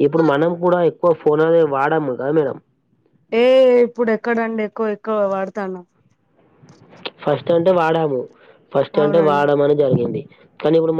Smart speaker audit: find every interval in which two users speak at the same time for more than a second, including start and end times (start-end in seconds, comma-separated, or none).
none